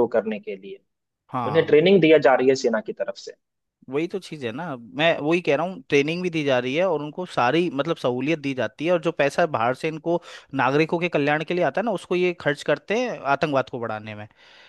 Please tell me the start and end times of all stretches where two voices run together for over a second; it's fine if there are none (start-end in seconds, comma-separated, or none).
none